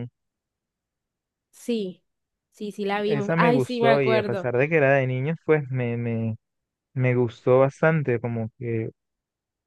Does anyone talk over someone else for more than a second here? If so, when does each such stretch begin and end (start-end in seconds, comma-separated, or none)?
3.0-4.5